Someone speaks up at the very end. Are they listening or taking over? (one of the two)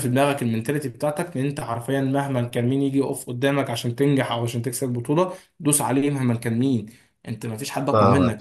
taking over